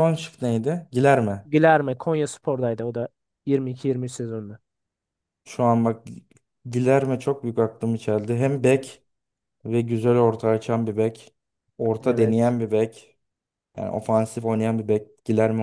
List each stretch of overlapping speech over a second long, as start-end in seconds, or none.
none